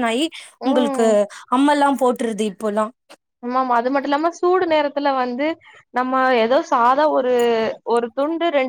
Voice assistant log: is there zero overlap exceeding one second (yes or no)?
yes